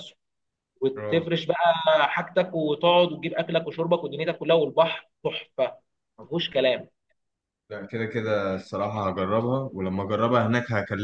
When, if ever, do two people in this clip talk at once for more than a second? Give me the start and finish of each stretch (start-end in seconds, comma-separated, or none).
none